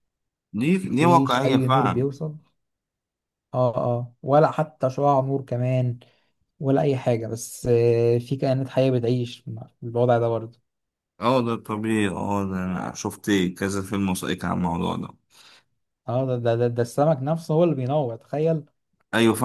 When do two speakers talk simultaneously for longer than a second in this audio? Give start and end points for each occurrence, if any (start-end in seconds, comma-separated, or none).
0.8-2.0